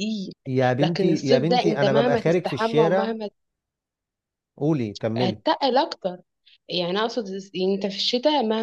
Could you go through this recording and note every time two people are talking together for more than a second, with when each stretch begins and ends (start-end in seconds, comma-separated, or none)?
0.8-3.2